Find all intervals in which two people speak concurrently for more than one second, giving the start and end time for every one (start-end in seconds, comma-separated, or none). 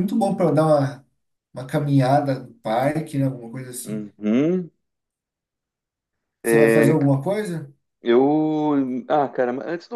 none